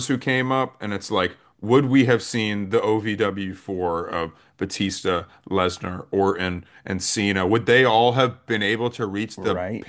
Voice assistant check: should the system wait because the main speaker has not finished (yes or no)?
yes